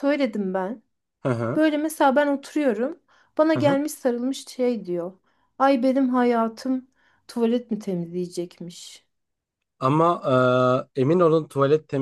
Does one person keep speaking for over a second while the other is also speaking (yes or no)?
no